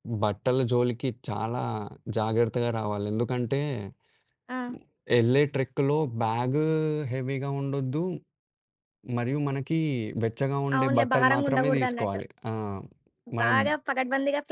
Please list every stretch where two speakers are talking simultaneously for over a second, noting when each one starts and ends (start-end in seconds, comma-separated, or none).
10.8-12.2